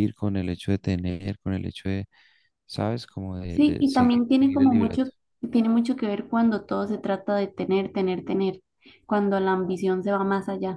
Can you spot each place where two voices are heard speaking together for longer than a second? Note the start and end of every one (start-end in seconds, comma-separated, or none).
3.5-5.0